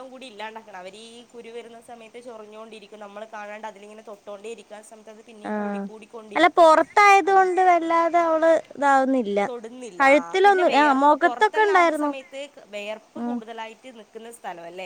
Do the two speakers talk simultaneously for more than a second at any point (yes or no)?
yes